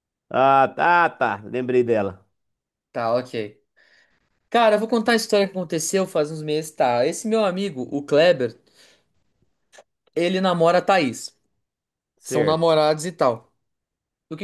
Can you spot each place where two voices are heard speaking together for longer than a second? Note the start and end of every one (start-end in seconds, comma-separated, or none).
none